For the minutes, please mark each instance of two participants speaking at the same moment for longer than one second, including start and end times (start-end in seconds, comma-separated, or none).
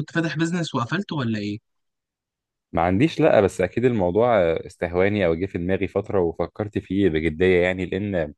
none